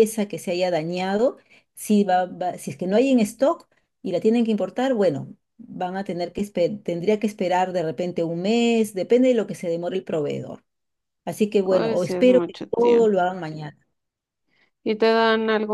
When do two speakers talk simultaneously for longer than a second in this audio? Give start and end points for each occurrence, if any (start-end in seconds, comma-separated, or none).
11.6-13.2